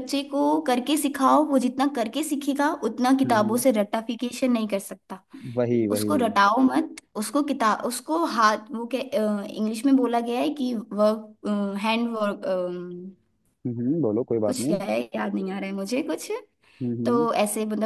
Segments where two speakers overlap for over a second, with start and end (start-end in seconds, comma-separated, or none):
none